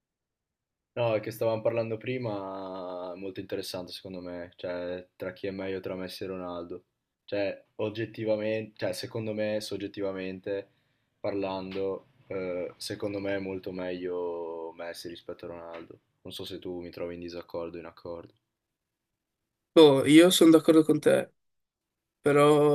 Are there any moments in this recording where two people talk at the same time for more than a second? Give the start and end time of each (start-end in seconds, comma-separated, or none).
none